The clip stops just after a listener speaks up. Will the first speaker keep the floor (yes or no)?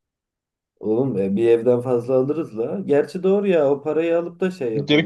no